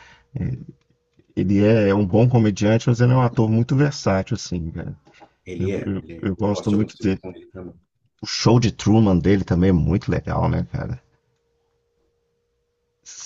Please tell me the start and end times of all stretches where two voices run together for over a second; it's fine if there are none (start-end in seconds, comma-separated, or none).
5.6-7.2